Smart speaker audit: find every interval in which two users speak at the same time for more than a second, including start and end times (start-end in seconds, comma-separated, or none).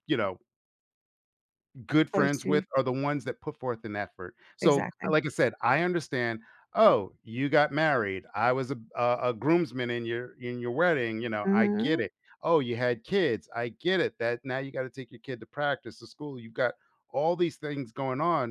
none